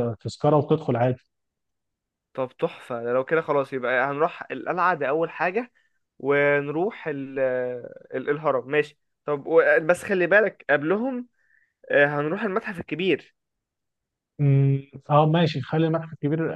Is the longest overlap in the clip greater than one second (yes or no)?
no